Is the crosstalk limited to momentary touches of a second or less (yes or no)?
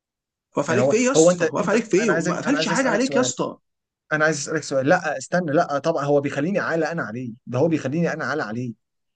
no